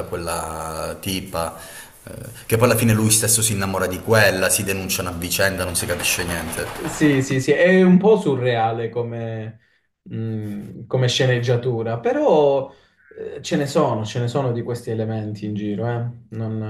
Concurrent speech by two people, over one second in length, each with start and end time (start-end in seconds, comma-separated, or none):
none